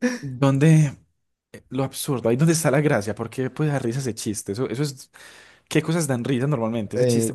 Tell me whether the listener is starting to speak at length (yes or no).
yes